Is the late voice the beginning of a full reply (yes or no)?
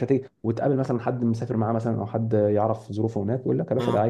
no